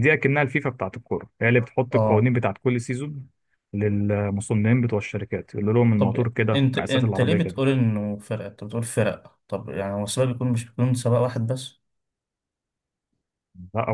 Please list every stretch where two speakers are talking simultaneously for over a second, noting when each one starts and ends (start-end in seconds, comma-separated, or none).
6.0-7.6